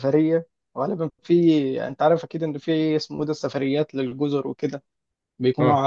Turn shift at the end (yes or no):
no